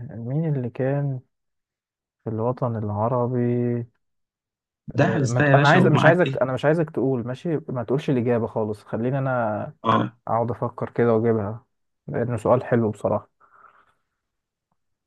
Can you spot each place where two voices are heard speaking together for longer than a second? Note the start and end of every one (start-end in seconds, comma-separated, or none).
5.0-6.4